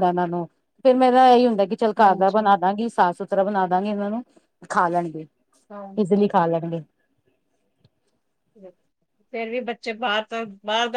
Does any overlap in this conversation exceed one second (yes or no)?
no